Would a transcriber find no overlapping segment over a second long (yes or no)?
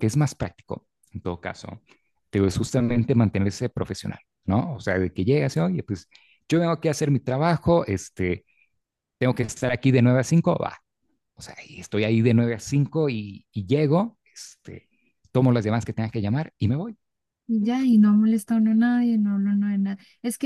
yes